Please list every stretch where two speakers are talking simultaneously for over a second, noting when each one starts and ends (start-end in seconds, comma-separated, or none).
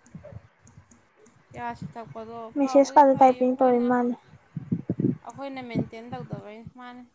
2.5-3.9